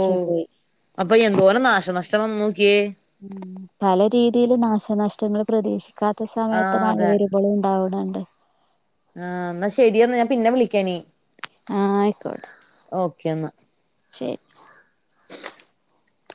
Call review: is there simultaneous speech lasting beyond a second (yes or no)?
no